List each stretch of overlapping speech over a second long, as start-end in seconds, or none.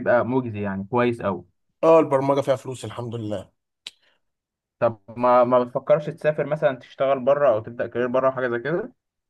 none